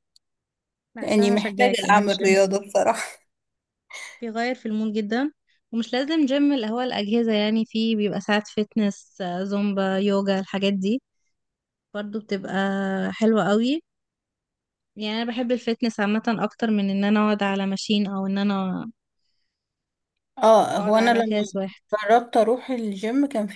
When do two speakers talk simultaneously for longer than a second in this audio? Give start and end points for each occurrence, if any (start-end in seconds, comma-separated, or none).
1.0-2.4